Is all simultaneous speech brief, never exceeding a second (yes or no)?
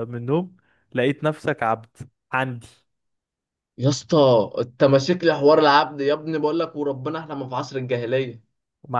yes